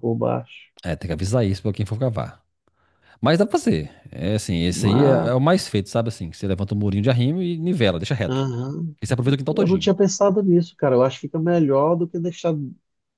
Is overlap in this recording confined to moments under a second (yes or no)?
yes